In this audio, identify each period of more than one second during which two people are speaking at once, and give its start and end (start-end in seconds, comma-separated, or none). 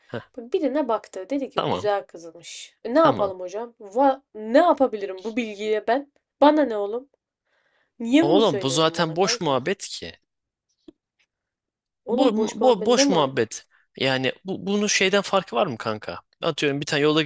8.2-9.6, 12.1-13.4